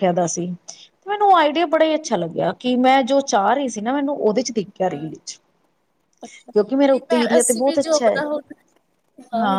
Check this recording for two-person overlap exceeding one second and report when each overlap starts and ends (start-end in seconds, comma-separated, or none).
6.5-8.2